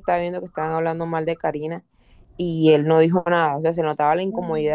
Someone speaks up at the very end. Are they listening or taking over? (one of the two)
listening